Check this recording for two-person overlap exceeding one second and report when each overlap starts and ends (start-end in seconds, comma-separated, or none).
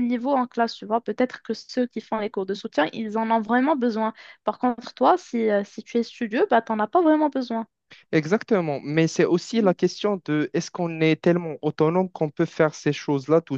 none